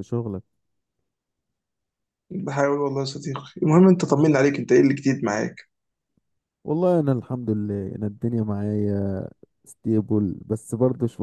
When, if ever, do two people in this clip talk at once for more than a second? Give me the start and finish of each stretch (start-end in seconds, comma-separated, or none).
none